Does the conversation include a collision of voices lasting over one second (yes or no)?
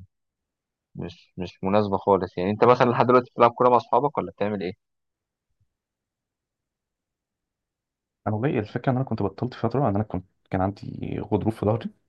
no